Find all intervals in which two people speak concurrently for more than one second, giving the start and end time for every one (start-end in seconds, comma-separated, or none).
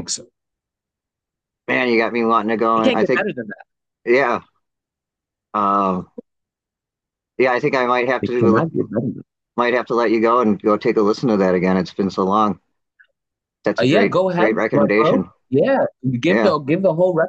13.8-15.3